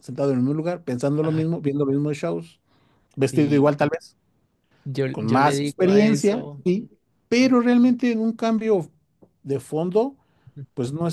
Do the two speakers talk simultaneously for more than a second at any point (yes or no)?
yes